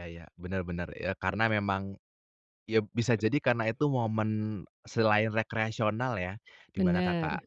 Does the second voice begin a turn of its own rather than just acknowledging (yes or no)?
no